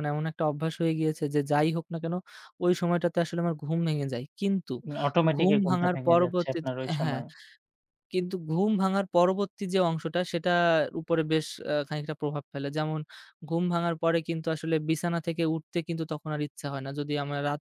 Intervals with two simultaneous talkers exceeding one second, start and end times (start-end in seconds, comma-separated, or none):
5.4-7.2